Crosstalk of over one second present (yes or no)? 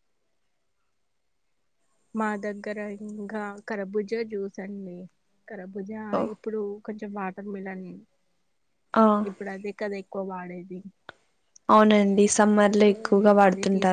no